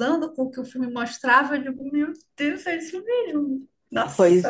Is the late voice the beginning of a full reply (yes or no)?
yes